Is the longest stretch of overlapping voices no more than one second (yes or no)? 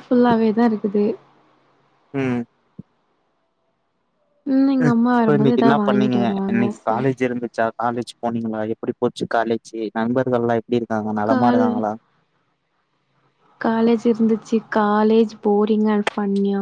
no